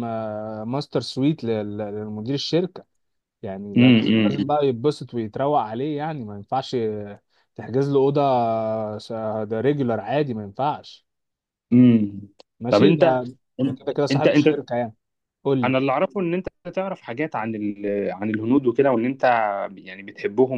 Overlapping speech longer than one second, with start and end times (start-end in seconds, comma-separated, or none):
none